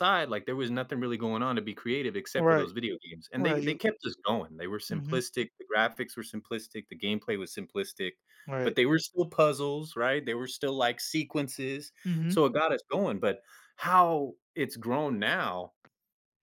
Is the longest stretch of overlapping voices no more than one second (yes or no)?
yes